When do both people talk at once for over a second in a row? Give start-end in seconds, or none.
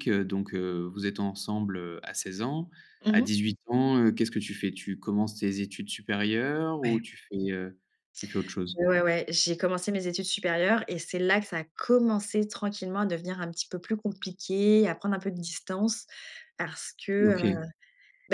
none